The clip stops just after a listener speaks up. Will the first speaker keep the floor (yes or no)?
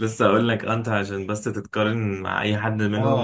no